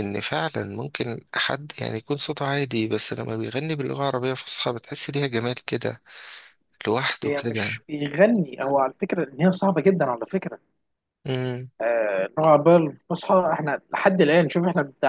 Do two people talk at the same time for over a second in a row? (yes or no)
no